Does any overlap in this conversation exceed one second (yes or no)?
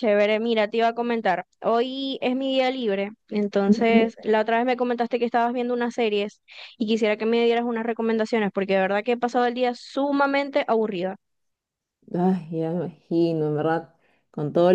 no